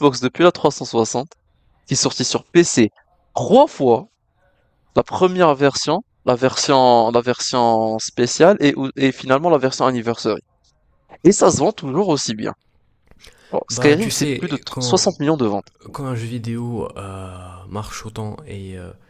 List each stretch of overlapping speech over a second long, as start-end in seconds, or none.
13.7-15.0